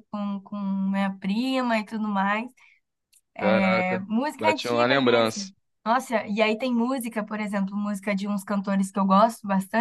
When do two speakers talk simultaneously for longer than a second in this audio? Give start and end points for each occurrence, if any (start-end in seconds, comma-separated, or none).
3.4-5.5